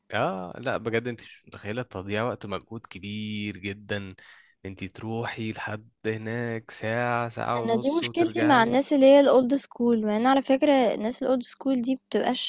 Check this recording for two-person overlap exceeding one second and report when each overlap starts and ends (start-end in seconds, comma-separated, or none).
7.6-8.8